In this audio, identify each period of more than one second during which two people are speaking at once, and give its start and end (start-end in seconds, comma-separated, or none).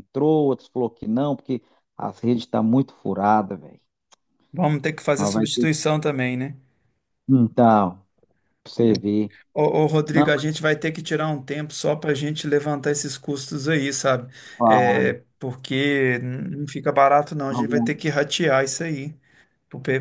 none